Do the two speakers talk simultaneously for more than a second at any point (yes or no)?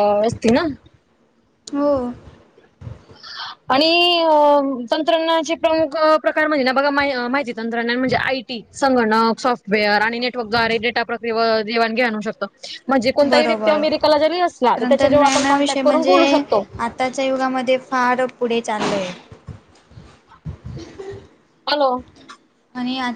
yes